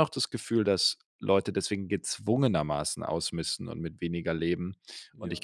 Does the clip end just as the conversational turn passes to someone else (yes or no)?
no